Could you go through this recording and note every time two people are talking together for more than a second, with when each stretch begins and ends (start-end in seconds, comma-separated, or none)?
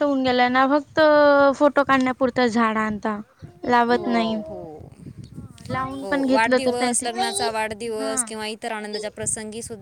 none